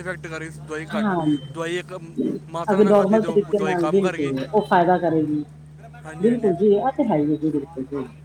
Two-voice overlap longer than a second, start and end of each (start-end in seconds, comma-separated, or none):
2.7-4.3